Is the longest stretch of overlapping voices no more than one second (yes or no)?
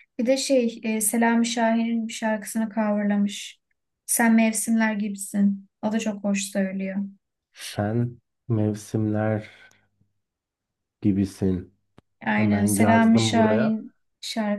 no